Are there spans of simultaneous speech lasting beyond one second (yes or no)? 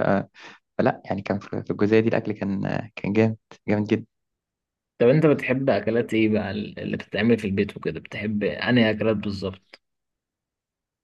no